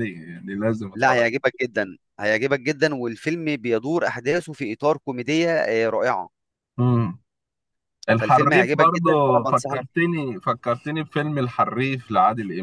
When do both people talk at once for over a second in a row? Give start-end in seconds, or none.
8.1-9.8